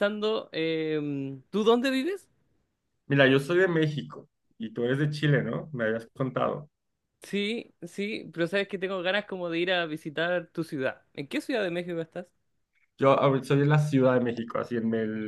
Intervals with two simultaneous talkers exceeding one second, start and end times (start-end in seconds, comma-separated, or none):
none